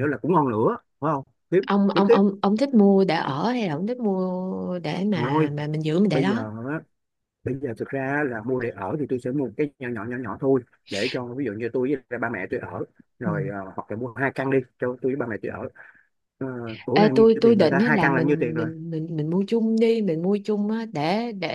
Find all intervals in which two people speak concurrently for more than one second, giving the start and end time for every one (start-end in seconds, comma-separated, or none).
16.9-18.7